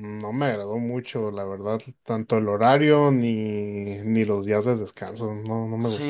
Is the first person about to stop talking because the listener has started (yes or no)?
yes